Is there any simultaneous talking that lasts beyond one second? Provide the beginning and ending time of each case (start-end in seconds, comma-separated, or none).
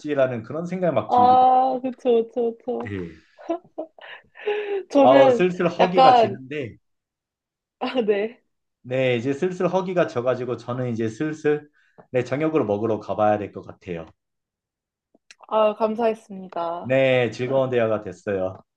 5.0-6.4